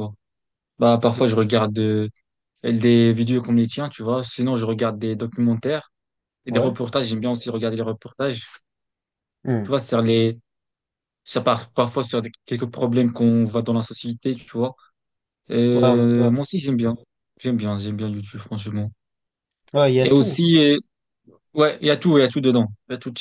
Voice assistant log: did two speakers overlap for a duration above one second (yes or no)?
no